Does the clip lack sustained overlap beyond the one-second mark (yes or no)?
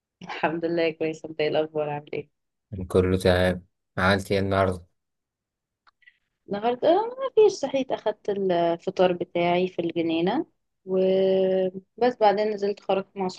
yes